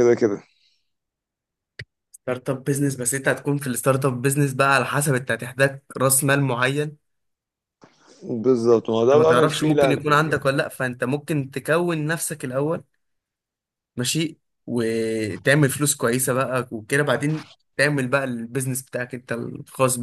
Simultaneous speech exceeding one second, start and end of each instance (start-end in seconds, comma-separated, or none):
9.1-10.5